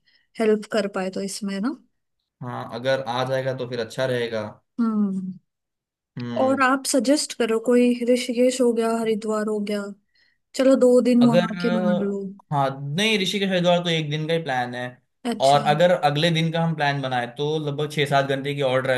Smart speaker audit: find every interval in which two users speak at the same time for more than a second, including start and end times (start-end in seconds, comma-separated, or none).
none